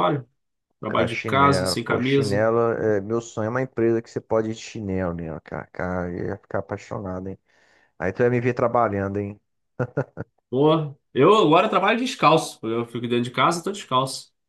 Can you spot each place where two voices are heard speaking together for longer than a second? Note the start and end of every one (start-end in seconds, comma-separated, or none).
0.8-2.5